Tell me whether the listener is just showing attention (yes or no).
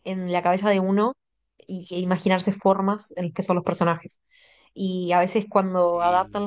yes